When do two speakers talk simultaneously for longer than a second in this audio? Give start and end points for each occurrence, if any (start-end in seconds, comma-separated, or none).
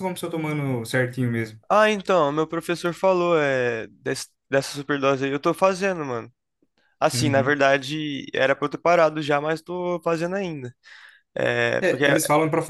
none